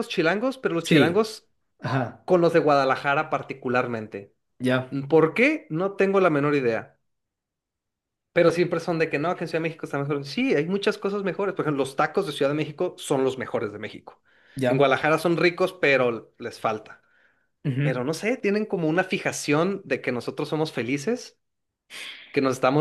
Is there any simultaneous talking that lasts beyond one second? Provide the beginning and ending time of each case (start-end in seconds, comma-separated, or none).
none